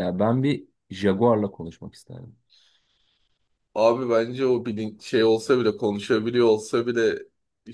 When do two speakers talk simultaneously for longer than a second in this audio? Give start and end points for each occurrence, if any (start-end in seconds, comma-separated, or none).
none